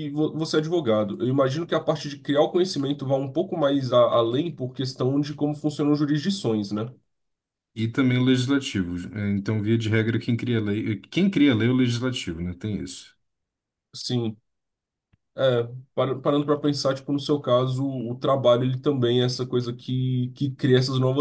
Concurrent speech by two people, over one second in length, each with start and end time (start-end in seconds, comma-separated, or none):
none